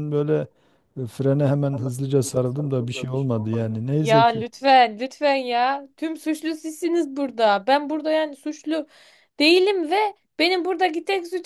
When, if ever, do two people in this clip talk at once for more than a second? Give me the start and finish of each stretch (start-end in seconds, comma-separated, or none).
none